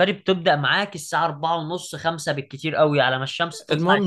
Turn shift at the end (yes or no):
yes